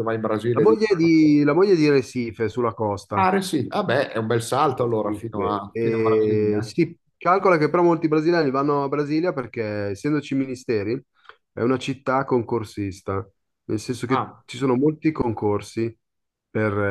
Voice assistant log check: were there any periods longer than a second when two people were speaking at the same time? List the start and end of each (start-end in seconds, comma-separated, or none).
5.0-6.7